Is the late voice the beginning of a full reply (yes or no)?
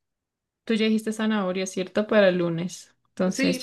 yes